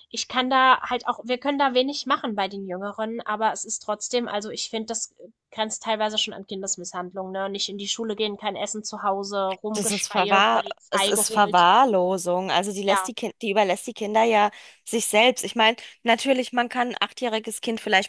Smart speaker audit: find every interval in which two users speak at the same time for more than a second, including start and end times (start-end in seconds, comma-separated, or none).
9.7-11.7